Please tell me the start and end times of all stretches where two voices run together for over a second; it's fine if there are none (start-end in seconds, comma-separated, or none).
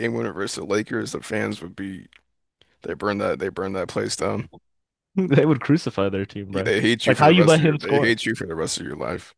6.6-8.1